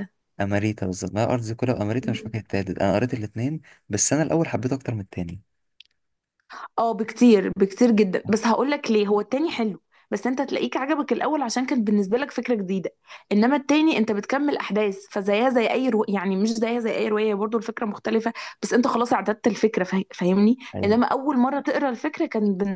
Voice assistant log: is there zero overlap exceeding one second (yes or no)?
yes